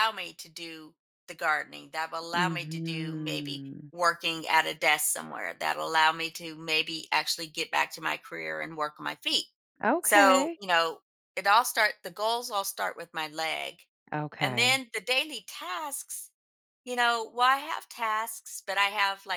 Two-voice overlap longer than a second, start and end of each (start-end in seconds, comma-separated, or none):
2.4-3.9